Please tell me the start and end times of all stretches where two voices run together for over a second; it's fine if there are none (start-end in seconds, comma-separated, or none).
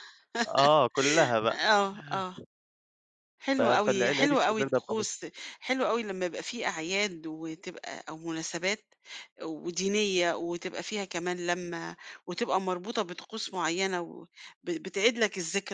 3.6-5.1